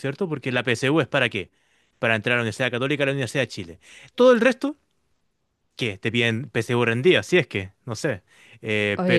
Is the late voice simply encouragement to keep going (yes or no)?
no